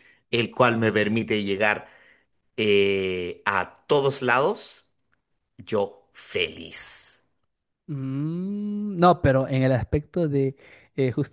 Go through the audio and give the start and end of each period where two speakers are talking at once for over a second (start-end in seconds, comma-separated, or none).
none